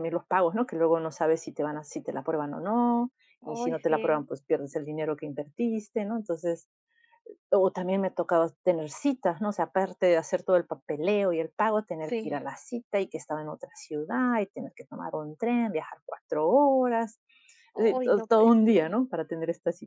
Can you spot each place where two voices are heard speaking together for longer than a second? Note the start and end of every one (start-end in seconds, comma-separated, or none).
17.8-19.0